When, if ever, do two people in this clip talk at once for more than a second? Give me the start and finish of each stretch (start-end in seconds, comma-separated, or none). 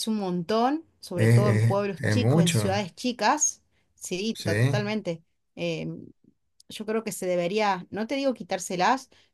1.1-2.6